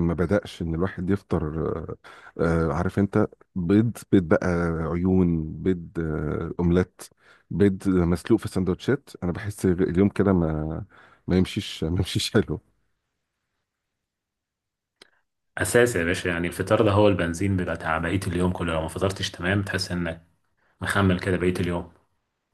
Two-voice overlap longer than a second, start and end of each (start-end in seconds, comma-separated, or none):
none